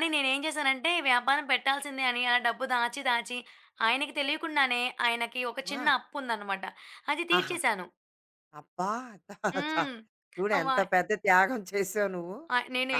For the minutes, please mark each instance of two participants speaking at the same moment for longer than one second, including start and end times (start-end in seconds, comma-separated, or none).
none